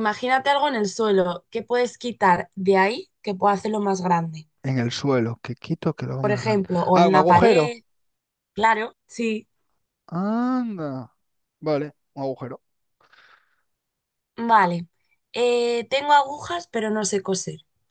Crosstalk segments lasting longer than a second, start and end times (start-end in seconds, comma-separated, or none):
6.2-7.8